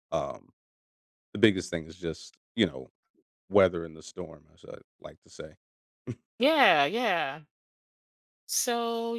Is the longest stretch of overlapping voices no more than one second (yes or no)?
yes